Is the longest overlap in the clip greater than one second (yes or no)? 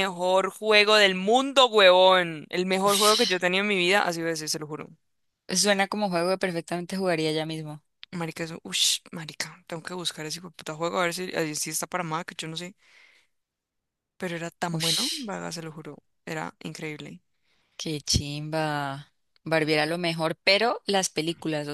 no